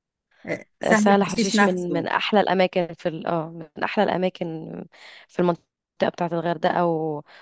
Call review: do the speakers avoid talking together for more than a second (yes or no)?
no